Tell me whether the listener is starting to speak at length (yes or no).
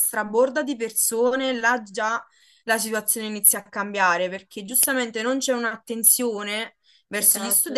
no